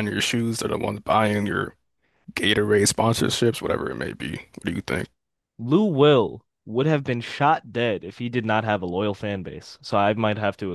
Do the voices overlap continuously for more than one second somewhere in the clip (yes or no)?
no